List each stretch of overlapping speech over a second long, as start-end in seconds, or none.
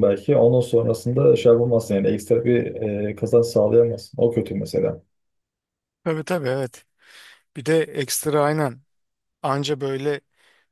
none